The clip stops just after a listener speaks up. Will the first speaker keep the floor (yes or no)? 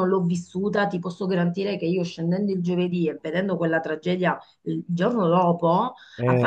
yes